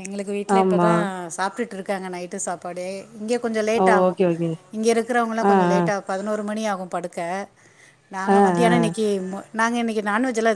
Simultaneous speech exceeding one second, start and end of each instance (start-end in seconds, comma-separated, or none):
none